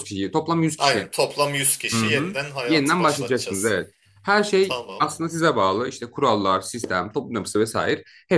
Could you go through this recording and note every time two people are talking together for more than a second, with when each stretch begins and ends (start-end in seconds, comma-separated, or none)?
1.9-3.8